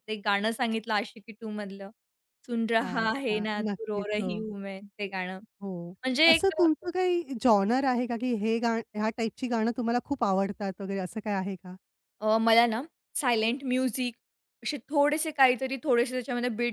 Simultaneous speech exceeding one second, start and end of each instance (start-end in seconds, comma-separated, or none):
2.8-4.4